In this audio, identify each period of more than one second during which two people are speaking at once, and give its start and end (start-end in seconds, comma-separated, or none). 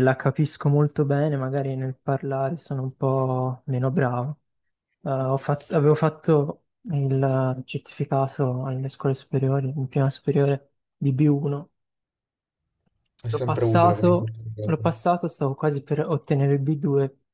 13.3-14.8